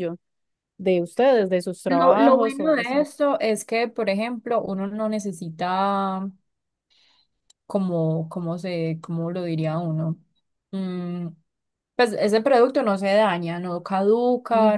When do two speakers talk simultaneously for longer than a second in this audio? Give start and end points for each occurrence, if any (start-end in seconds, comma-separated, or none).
1.9-3.1